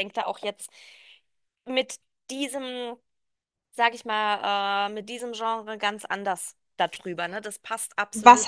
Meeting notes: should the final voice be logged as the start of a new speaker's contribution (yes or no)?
yes